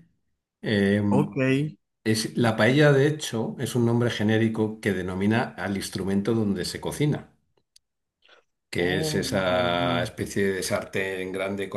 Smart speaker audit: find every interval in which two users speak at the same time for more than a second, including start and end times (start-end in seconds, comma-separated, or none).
8.8-10.1